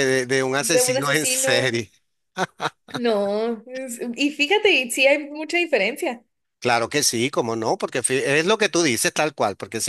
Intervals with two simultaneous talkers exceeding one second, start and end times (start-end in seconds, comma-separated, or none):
0.6-1.8